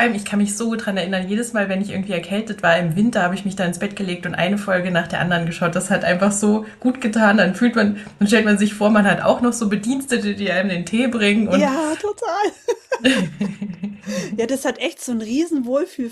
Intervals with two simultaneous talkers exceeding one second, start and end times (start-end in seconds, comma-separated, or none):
none